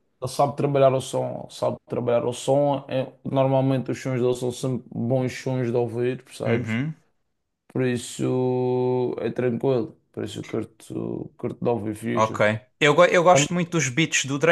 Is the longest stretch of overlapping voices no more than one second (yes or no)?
yes